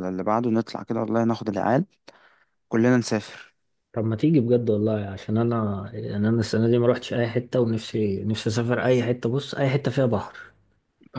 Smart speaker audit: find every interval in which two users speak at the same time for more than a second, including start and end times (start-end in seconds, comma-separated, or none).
none